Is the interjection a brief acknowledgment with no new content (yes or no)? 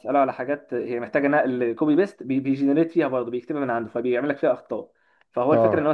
yes